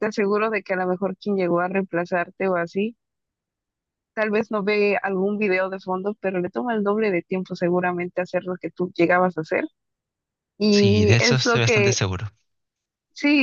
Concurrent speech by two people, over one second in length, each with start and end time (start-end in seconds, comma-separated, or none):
10.7-12.0